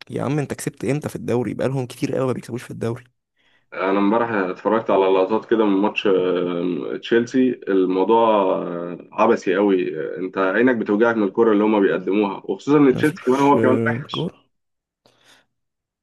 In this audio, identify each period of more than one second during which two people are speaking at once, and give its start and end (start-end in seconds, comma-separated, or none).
12.9-14.3